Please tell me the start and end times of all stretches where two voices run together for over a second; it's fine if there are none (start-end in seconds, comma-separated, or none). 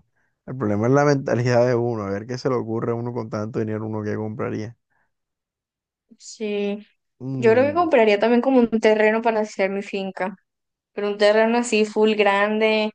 none